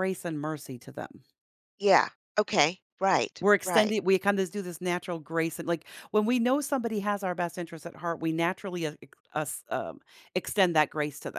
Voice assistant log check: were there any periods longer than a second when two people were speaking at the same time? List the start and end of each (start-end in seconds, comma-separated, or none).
none